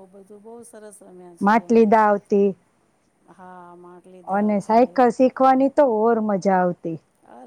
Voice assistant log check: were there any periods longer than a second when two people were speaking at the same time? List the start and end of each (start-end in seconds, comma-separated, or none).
none